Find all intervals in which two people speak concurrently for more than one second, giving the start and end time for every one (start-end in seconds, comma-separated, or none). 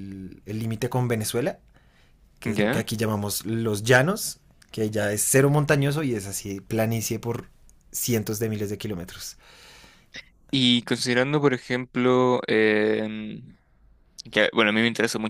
none